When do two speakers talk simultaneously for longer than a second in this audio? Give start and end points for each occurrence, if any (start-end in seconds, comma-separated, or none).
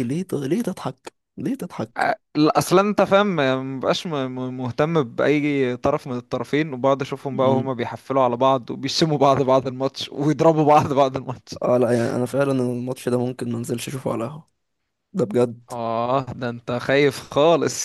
none